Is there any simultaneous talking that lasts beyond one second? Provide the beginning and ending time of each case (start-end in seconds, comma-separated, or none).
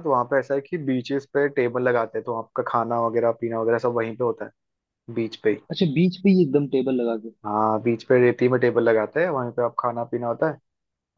none